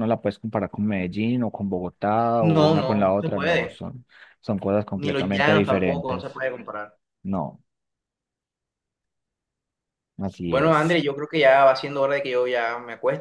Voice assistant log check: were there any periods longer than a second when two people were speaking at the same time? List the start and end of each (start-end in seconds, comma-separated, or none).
2.4-3.8, 5.0-6.4